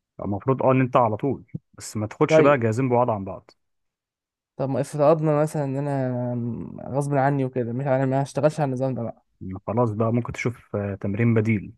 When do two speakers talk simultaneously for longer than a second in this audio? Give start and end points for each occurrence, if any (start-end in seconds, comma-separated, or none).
none